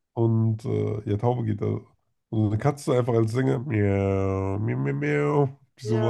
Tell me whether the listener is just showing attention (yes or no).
no